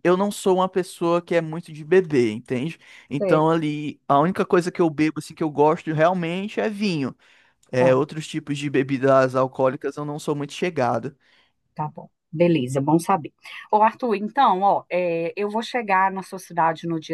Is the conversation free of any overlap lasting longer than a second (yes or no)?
yes